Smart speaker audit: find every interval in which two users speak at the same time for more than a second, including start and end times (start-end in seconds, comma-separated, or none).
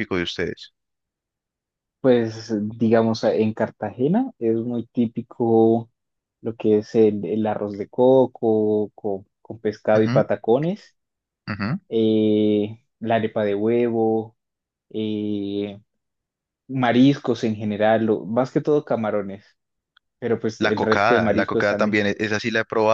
20.6-22.0